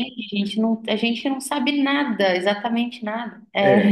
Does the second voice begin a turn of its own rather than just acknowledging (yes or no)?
yes